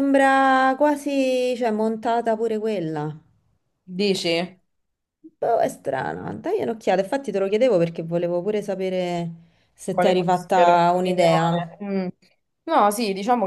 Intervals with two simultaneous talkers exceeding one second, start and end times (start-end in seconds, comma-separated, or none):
9.9-11.6